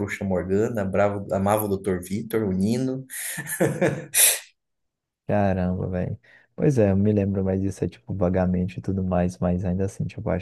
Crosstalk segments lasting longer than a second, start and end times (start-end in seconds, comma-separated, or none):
none